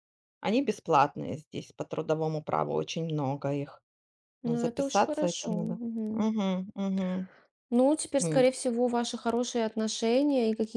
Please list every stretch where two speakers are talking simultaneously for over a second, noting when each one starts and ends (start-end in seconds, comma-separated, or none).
4.5-6.3